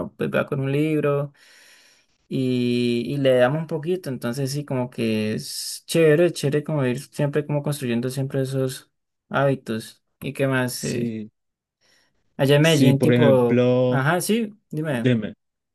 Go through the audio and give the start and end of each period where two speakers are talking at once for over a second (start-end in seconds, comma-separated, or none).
12.6-14.0